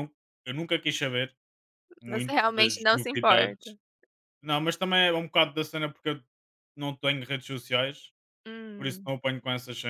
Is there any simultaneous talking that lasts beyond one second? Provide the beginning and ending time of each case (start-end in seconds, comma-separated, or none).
2.1-3.8